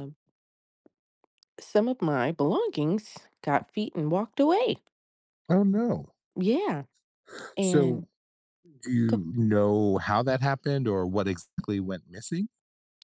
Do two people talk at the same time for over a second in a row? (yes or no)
no